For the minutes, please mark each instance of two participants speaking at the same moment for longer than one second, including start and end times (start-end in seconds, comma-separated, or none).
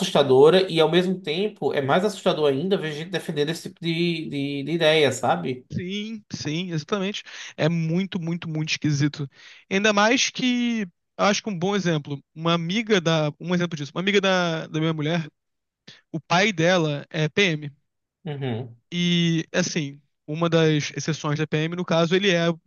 none